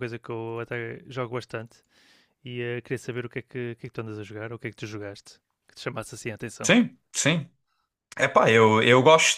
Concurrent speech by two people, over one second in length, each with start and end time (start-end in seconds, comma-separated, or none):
none